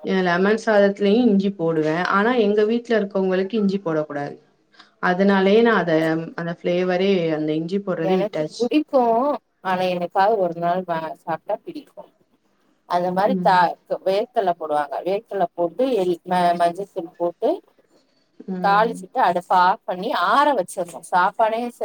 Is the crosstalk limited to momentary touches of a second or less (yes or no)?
yes